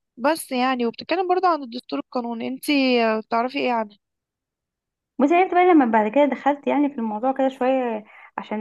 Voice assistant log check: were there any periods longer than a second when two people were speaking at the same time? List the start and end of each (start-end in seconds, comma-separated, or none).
none